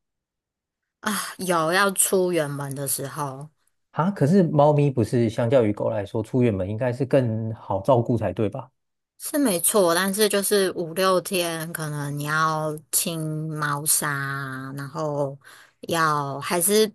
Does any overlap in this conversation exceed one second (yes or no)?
no